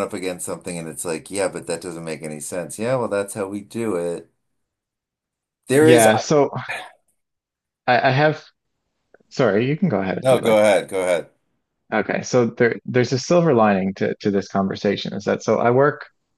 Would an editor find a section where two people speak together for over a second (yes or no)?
no